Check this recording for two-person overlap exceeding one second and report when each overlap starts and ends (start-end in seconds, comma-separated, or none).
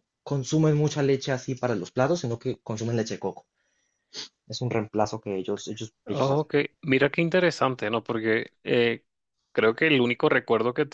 none